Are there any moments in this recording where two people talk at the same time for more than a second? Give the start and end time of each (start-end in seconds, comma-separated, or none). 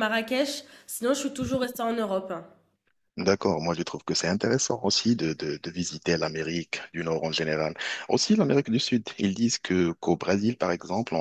none